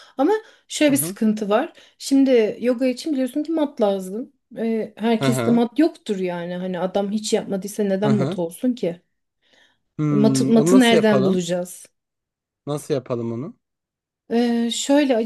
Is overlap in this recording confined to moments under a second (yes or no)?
no